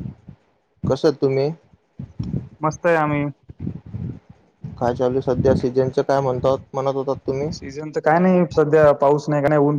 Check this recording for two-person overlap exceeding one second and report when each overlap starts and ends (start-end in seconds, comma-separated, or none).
none